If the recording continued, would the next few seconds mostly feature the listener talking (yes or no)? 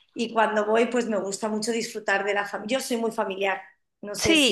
yes